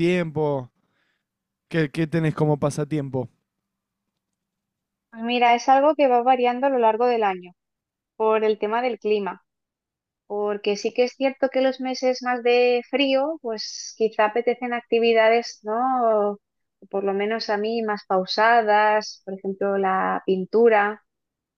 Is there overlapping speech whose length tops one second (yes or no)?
no